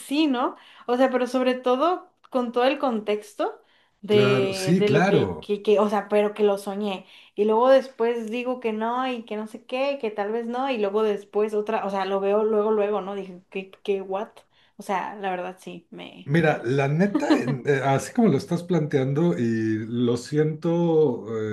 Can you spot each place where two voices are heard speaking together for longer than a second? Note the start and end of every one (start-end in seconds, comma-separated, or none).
4.1-5.5